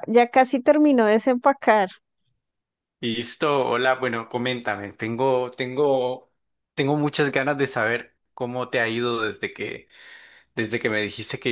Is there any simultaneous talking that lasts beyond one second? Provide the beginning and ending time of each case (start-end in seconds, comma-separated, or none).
none